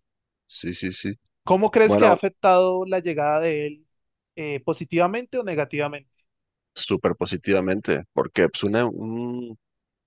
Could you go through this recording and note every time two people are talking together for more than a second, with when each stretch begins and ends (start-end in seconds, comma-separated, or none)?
none